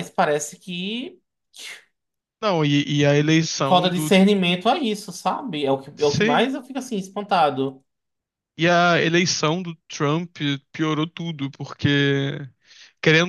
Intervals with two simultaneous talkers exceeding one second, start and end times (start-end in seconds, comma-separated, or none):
none